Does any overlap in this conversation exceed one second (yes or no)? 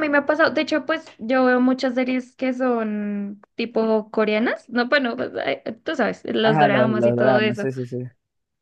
yes